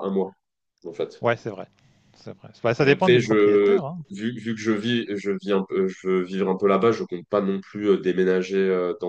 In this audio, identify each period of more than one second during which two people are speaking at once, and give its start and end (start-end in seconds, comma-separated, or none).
2.8-4.0